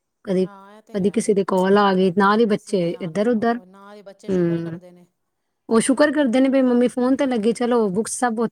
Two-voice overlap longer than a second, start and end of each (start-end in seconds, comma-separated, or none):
2.2-3.6